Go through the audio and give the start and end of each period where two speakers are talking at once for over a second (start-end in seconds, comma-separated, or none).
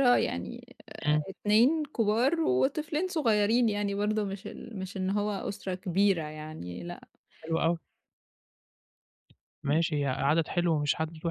none